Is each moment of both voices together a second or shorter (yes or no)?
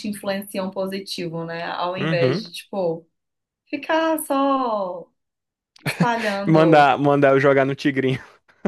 yes